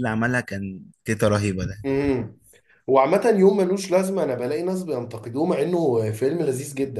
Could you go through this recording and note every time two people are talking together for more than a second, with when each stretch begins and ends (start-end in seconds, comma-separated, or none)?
none